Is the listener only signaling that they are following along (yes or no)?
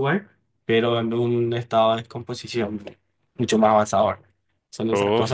no